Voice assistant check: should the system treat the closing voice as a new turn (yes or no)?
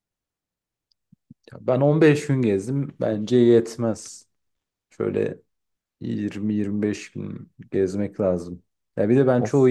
no